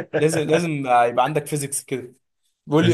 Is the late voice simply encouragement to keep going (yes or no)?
yes